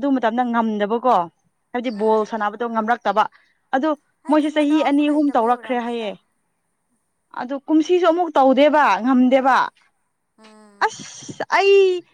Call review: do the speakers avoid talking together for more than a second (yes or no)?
no